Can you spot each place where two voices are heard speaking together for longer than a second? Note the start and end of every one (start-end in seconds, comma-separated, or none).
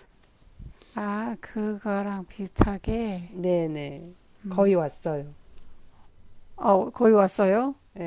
none